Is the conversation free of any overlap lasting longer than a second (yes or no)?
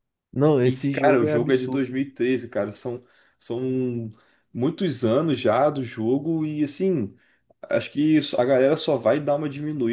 no